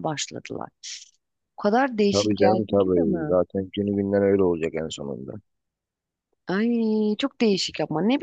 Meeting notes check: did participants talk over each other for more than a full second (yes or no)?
yes